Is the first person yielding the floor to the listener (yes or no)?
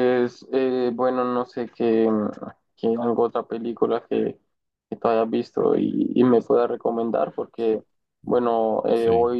no